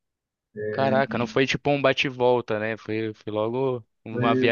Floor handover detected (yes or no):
no